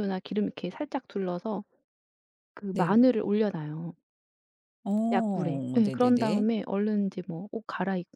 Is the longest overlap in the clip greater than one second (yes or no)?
yes